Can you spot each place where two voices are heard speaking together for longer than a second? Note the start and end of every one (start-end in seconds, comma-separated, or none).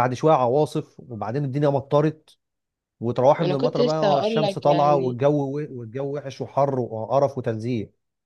3.4-5.2